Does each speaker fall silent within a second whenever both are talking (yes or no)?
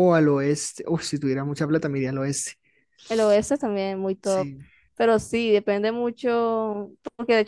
yes